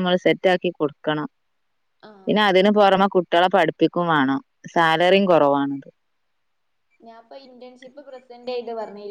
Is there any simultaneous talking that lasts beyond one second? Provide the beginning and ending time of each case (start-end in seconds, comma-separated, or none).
none